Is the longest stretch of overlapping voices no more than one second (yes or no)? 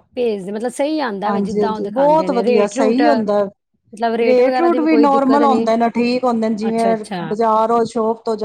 no